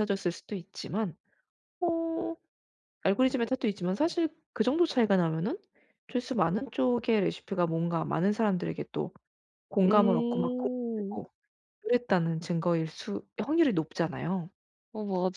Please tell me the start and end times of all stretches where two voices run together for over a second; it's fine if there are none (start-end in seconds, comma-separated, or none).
9.8-11.2